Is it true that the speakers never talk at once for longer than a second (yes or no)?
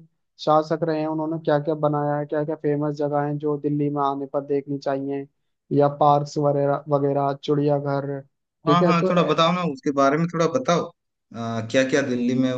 yes